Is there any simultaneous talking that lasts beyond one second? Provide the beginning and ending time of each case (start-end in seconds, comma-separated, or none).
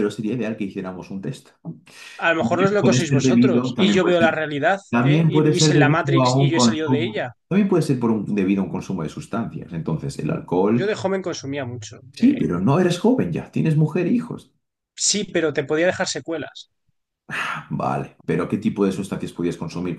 2.4-4.3, 4.9-7.3